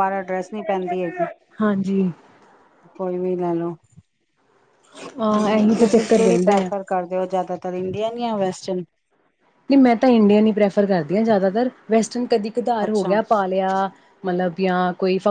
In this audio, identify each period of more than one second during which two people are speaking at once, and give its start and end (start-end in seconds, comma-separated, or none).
5.3-6.7